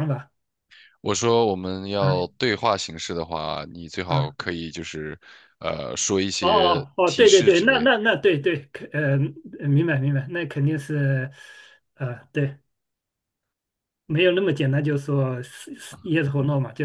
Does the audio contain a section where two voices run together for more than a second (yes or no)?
yes